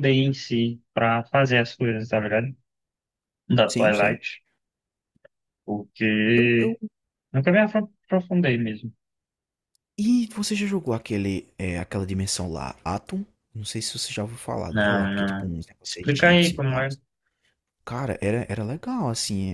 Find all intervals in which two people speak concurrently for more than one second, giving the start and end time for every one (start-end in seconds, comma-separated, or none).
14.7-16.9